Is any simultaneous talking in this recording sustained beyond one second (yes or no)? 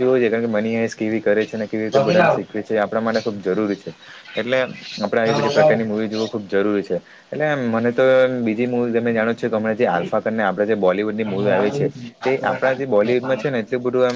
yes